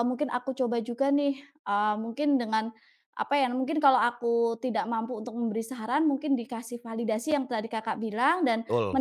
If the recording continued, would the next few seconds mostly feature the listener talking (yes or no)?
no